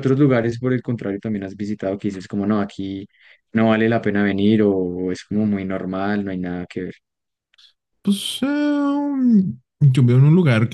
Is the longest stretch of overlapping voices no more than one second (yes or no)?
yes